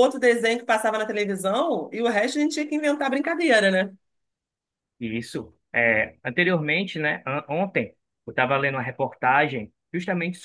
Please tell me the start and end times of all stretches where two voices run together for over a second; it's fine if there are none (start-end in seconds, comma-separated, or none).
none